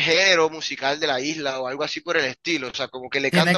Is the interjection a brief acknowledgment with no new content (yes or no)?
no